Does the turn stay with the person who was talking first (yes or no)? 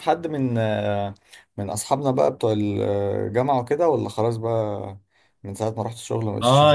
no